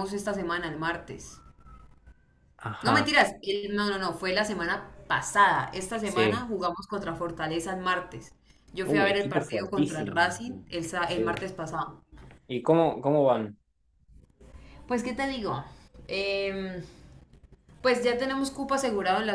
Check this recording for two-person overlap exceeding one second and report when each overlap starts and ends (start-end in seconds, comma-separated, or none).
8.8-10.2